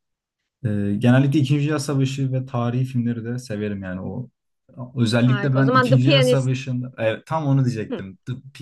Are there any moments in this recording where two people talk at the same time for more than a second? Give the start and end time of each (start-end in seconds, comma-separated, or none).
5.2-6.8